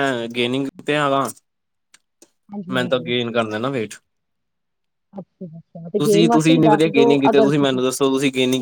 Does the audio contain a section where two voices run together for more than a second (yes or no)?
yes